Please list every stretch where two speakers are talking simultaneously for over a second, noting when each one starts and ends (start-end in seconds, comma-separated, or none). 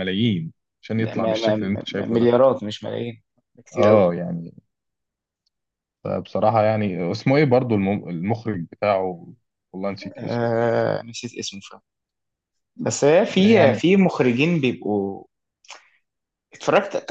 1.0-2.3